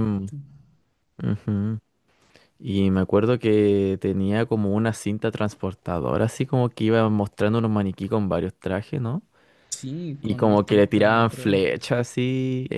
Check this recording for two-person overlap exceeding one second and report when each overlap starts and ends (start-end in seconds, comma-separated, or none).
10.2-11.6